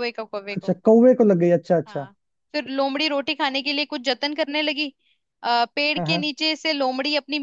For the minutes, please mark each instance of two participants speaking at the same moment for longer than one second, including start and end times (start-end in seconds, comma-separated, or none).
none